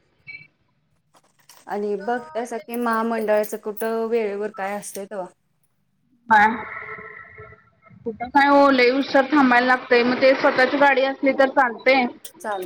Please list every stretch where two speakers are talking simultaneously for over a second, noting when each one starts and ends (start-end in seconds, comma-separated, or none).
2.0-3.3